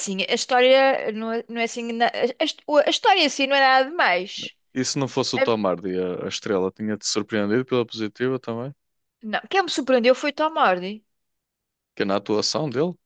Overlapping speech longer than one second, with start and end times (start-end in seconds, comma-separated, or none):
none